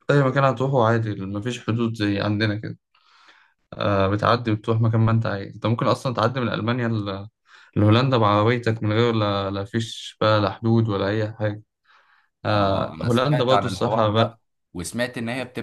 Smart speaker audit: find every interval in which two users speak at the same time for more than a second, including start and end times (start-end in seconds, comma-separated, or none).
12.5-14.4